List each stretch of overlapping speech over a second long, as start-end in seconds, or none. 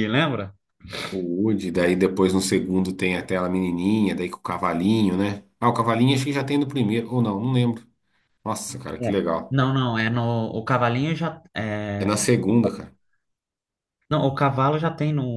none